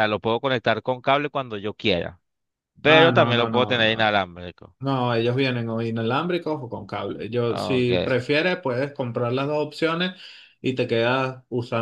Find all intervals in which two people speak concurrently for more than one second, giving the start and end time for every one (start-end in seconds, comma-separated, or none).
2.9-4.2